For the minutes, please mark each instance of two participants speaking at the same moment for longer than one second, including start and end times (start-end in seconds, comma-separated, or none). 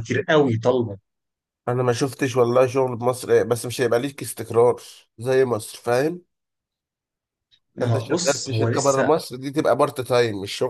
7.8-9.1